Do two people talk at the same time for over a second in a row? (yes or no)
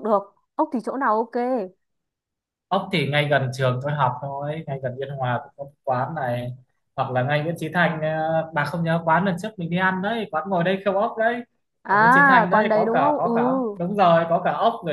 yes